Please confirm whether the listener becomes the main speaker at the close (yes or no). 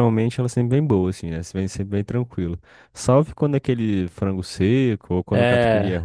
yes